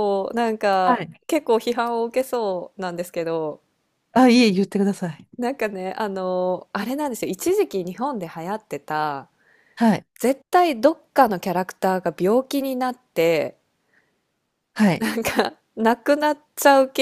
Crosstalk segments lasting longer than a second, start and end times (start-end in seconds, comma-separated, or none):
none